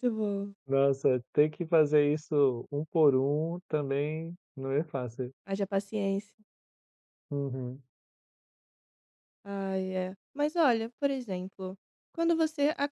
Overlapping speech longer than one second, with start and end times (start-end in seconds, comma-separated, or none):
none